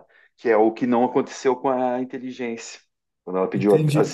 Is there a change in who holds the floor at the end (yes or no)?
yes